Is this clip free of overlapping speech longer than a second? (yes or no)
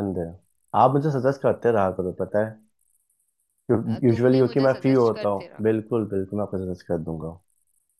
no